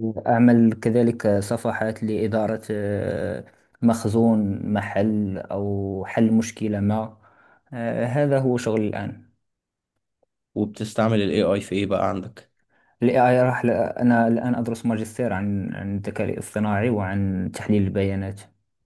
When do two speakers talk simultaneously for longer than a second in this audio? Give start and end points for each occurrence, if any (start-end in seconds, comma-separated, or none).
none